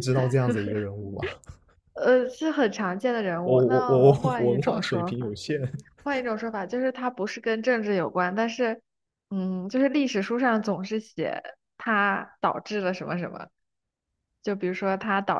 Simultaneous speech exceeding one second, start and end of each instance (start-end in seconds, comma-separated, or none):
3.4-5.3